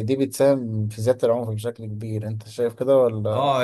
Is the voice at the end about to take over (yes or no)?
yes